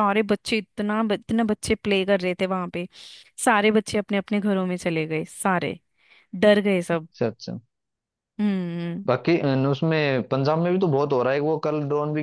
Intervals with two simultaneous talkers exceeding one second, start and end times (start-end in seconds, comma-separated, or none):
none